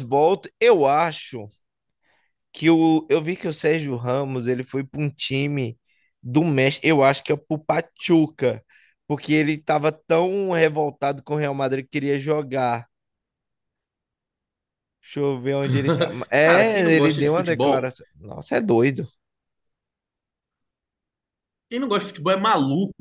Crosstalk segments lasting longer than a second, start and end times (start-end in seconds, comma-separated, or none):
16.4-17.9